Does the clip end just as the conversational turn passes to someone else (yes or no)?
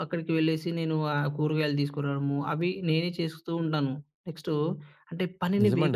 yes